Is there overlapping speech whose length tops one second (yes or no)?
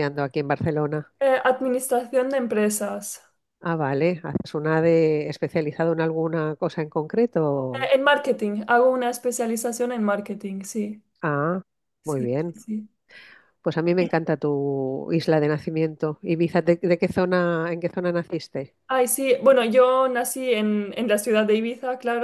no